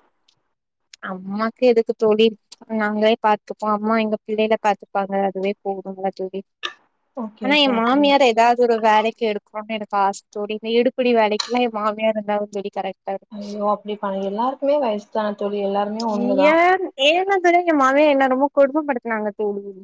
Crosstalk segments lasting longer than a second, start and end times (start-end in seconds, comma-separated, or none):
none